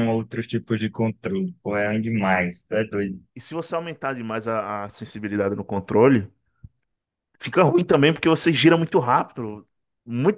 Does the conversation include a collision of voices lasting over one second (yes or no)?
no